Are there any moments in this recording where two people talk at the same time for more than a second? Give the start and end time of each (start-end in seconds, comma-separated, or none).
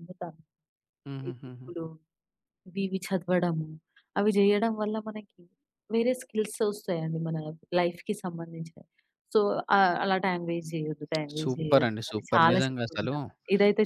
11.4-13.2